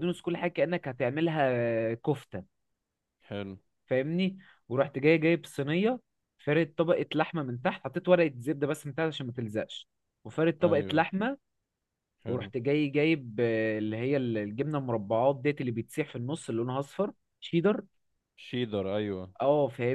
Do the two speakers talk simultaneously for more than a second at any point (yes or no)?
no